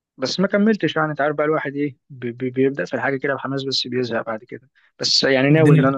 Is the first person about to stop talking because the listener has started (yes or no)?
no